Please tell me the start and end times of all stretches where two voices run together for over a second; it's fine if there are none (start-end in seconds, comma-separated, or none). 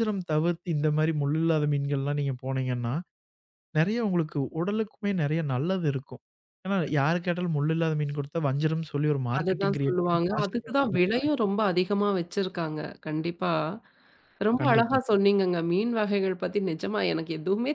9.4-11.1